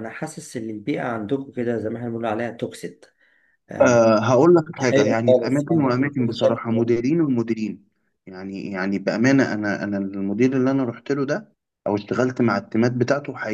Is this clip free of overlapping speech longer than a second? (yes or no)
no